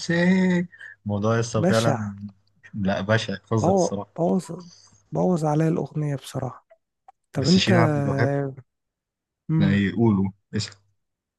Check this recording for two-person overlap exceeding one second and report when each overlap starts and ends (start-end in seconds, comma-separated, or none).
none